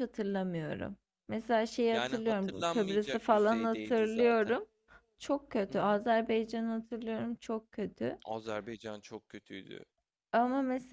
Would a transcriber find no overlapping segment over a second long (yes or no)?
no